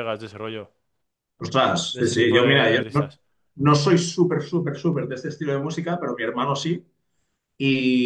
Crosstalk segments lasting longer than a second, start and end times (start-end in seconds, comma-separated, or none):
1.6-3.1